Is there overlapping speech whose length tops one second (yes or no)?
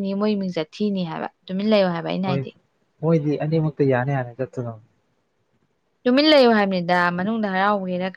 no